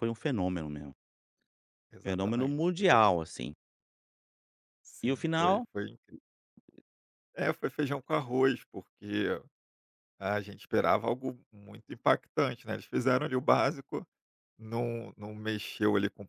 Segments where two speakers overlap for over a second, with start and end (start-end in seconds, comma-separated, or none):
2.0-3.2